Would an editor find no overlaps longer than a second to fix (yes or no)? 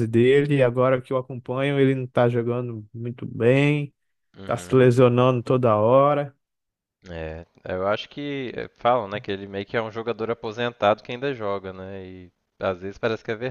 yes